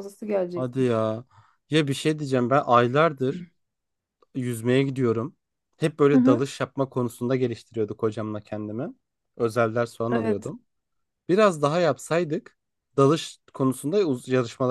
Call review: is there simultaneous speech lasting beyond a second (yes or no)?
no